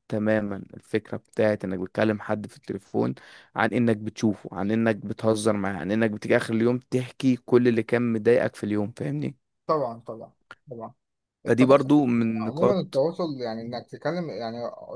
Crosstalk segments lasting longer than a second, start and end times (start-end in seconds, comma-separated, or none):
11.4-13.0